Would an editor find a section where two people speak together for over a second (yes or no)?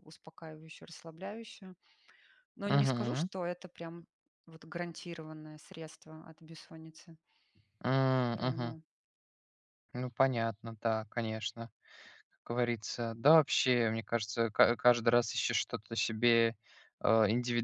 no